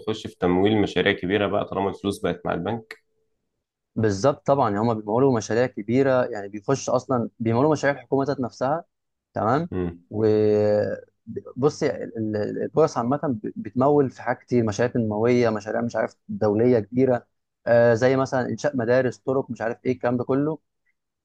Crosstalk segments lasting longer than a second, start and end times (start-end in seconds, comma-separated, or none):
none